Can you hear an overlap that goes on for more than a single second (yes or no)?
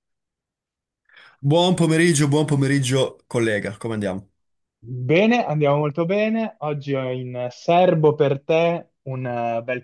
no